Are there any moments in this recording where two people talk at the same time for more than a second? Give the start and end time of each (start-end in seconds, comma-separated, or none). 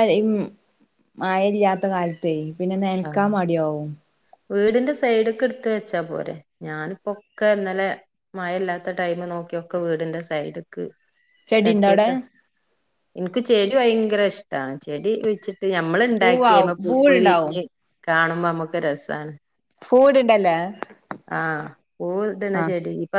16.2-17.5